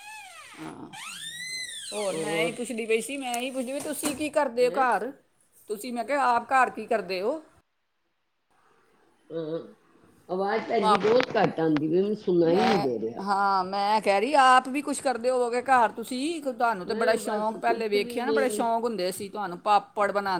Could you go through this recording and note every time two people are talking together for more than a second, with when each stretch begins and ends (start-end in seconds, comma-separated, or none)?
16.9-18.6